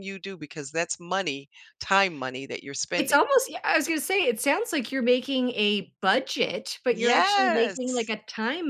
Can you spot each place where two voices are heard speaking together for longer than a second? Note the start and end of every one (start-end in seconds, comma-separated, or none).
6.9-8.1